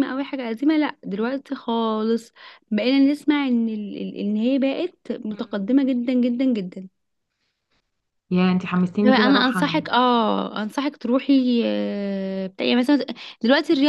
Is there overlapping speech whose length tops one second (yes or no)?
no